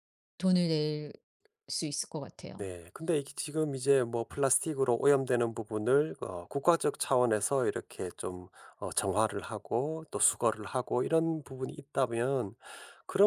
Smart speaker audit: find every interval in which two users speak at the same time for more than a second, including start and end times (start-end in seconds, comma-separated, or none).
none